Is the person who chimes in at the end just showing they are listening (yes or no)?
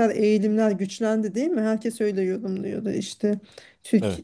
yes